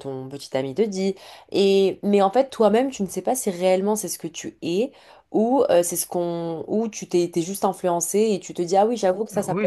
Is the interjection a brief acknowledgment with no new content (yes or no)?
no